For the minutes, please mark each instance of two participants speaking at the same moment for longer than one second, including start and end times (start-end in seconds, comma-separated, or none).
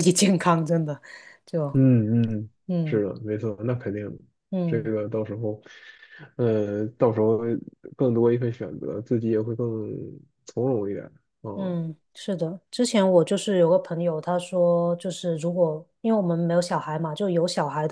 none